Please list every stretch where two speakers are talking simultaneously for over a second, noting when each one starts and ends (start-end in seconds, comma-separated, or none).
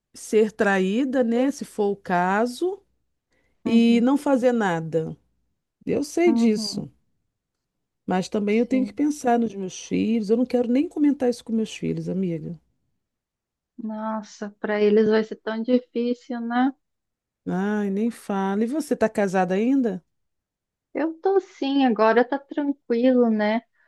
none